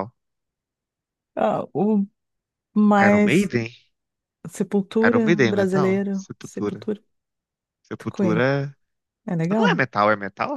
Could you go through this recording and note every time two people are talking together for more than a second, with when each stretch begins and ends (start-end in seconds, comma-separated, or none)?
5.0-6.9